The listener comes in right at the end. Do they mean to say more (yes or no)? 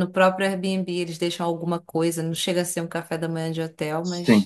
yes